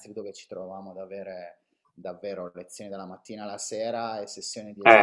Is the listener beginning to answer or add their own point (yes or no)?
yes